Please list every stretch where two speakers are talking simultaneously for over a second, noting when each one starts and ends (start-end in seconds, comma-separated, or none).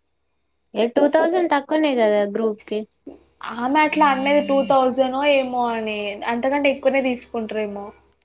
none